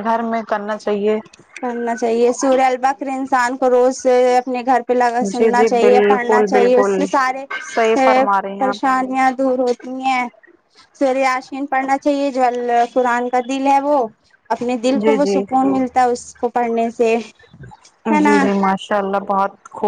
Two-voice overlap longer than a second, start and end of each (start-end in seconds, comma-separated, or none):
5.4-7.0